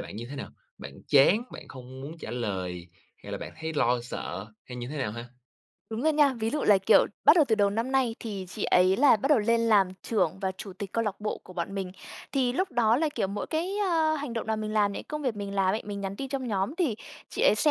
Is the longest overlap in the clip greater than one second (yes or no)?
no